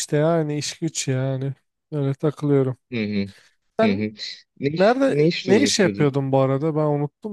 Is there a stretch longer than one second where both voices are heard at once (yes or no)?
yes